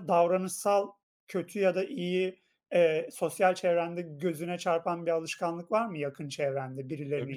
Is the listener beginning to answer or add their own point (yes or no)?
yes